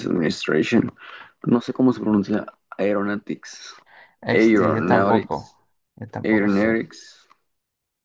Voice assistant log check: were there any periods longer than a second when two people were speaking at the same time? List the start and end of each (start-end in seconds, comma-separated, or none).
4.3-5.5